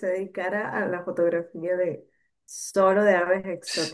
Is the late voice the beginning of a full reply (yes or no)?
yes